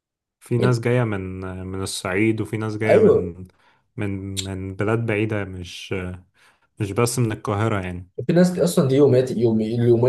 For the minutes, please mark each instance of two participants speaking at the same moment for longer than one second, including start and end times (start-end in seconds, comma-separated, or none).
none